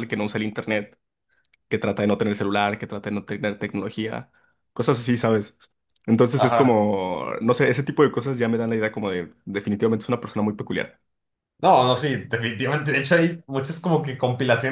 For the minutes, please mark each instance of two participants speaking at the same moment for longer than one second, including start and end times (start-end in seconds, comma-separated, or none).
none